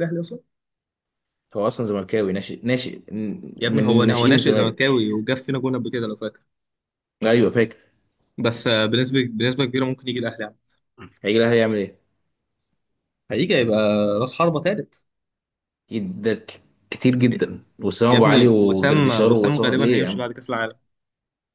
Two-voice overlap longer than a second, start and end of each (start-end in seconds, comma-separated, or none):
3.6-5.0, 18.1-20.2